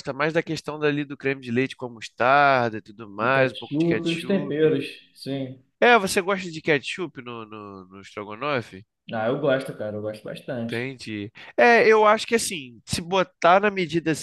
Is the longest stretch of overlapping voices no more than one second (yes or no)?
no